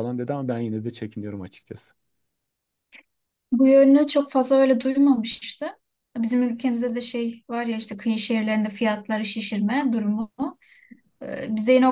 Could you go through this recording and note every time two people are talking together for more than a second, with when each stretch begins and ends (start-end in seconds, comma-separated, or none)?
none